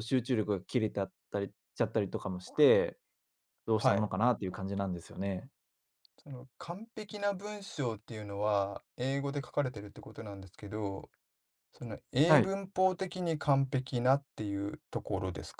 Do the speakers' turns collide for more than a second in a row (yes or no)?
no